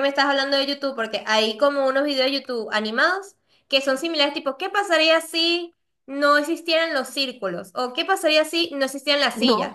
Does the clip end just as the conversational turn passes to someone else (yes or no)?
no